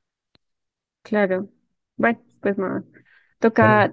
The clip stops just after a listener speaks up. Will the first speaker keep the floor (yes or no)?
yes